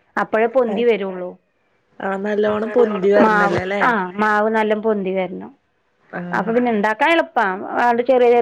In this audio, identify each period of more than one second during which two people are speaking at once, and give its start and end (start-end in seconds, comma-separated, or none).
none